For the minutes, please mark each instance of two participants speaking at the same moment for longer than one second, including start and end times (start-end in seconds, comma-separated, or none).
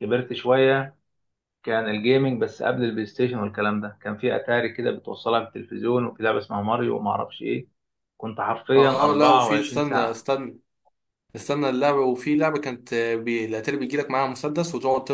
8.7-10.3